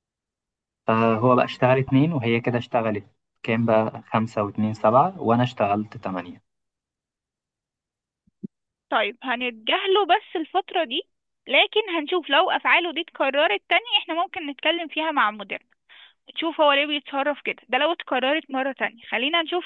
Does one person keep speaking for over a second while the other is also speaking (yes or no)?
no